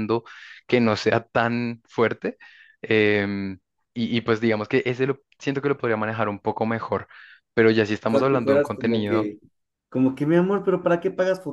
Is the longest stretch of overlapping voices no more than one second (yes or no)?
no